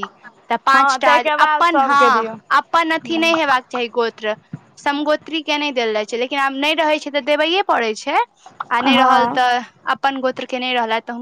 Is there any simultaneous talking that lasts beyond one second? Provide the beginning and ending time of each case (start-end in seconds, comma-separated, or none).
0.7-2.3